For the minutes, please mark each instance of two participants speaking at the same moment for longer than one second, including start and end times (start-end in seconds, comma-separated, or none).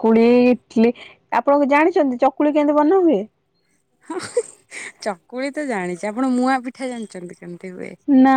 none